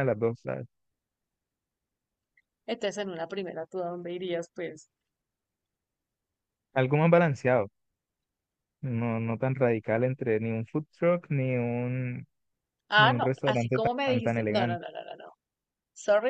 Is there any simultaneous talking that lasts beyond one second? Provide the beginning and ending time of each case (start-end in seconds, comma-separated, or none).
12.9-14.8